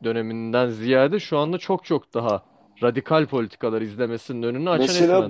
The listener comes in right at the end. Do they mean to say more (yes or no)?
yes